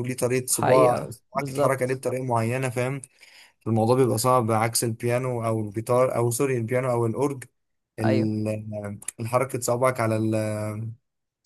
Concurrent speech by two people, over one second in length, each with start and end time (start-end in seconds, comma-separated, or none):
0.5-2.0